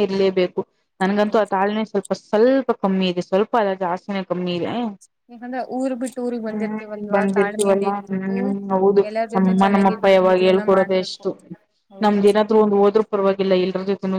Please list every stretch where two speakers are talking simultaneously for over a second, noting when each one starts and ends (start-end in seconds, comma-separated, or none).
6.5-8.4, 9.1-11.2